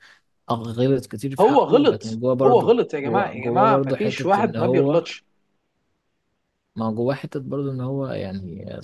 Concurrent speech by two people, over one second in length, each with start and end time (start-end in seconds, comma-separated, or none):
1.4-5.0